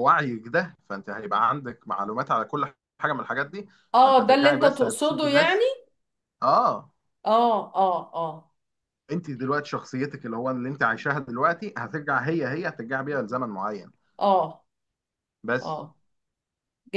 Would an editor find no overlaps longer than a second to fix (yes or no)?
no